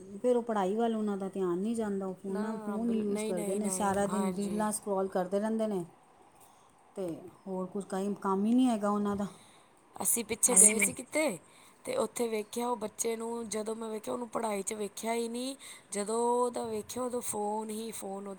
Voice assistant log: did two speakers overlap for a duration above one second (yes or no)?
yes